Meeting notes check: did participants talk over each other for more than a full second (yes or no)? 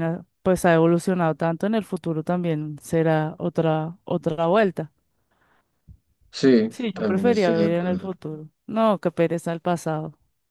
yes